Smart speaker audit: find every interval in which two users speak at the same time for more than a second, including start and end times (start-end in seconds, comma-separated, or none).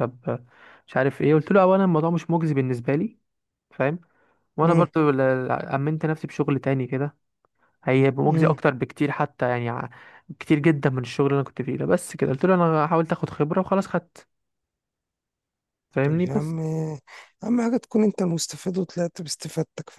none